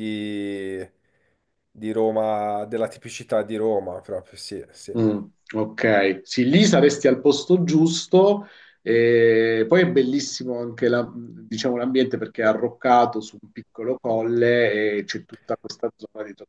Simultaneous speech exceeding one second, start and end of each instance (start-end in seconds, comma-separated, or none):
none